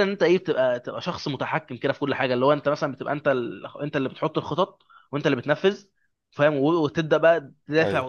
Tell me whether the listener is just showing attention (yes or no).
yes